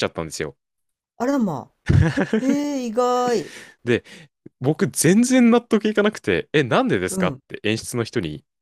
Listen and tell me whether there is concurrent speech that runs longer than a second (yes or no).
no